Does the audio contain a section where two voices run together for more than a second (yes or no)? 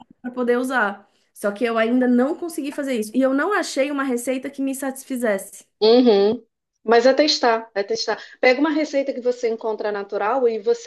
no